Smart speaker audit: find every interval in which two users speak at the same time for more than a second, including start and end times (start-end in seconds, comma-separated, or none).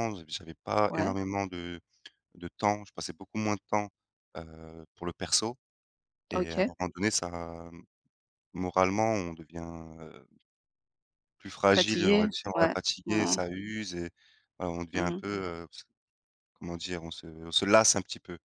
11.7-13.4